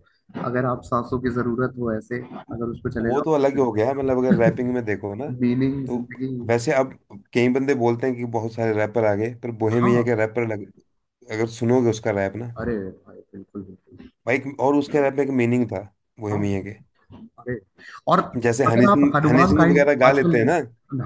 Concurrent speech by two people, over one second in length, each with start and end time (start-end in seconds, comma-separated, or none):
18.7-20.4